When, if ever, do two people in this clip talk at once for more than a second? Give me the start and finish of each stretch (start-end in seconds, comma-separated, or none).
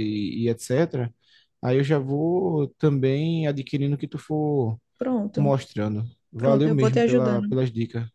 6.4-7.6